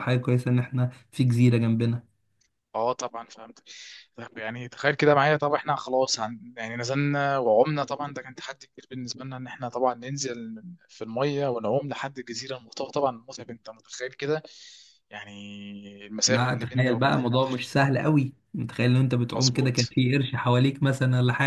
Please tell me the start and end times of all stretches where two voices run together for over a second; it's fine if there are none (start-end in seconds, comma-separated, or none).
16.3-17.6